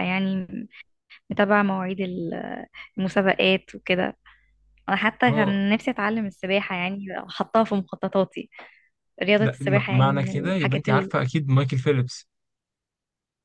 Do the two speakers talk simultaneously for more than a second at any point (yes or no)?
yes